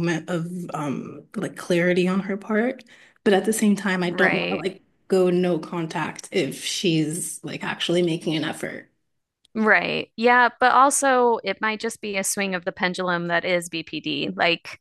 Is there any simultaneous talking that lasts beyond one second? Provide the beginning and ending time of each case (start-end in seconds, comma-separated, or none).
none